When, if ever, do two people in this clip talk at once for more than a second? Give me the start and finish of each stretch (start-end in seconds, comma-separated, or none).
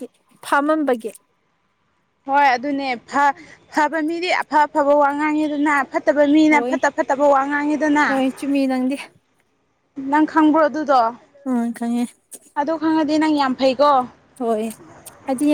none